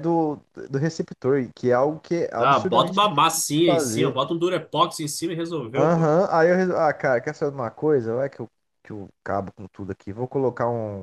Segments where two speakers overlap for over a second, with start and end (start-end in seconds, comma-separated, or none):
2.4-4.1